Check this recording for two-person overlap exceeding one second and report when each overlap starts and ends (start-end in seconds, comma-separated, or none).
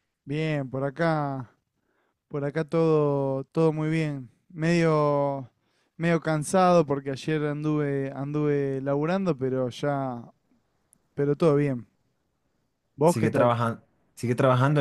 none